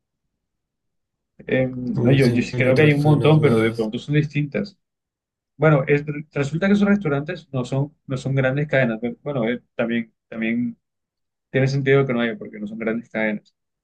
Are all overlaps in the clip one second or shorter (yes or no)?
no